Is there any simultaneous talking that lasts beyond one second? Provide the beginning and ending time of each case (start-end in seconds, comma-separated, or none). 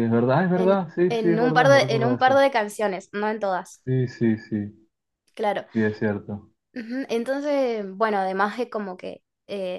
0.5-2.4